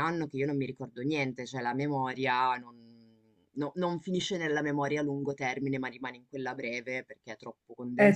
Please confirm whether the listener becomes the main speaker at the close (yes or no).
no